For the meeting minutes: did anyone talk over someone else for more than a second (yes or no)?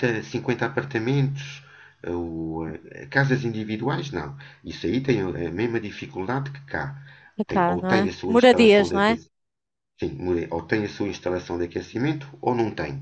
yes